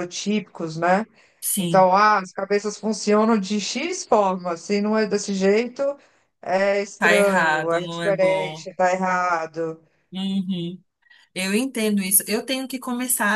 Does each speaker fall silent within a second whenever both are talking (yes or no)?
no